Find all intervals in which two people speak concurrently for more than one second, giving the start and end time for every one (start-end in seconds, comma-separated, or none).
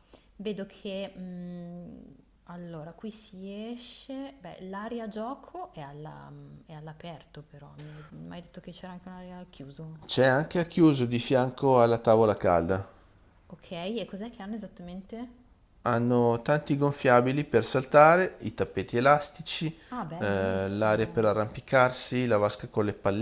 19.9-21.3